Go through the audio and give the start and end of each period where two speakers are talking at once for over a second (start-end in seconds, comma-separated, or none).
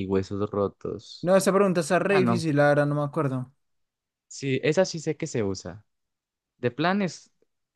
none